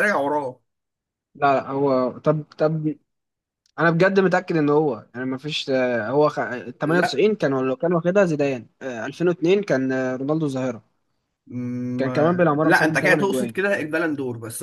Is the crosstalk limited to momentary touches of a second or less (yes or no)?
no